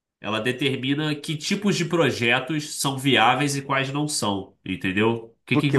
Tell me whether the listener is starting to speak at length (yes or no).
yes